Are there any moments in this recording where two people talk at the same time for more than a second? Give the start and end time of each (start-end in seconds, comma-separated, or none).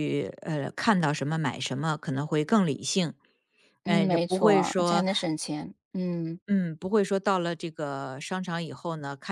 3.8-5.0